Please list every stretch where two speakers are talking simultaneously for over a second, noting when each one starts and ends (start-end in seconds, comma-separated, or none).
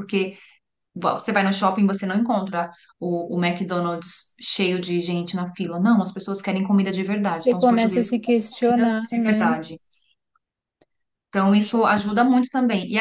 7.3-9.6